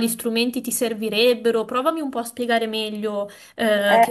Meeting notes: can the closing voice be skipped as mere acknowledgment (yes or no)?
no